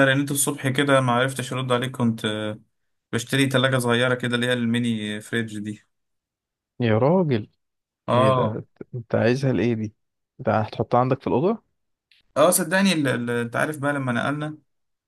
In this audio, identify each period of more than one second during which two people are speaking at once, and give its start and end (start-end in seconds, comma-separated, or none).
none